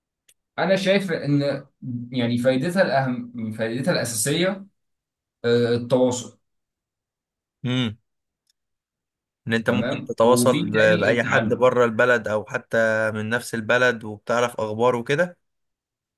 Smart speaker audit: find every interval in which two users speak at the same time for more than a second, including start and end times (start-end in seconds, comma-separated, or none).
9.7-11.7